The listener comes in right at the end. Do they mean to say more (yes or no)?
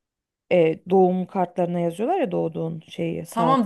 yes